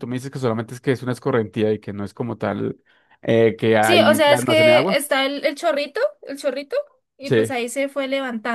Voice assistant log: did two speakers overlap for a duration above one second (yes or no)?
yes